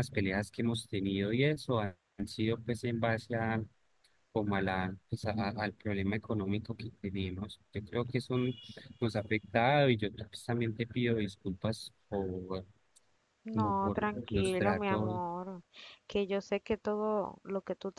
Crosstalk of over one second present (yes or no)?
yes